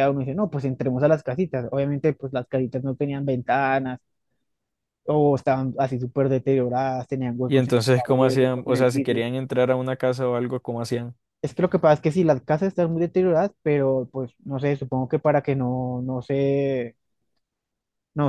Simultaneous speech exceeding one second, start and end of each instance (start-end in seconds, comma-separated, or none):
7.5-9.2